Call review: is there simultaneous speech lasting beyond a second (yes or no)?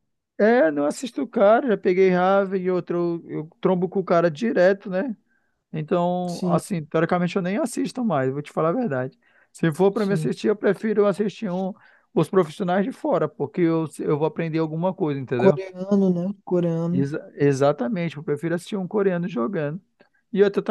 no